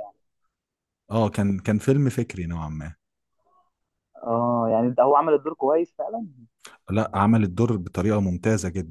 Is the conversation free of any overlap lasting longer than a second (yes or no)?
yes